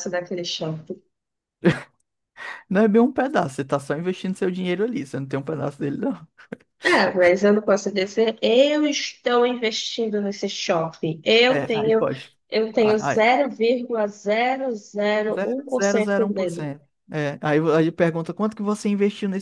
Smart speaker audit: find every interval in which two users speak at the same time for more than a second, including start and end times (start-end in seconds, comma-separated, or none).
15.3-16.7